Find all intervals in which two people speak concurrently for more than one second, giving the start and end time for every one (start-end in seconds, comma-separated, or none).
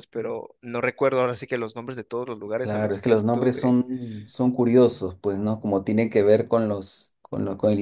2.5-3.8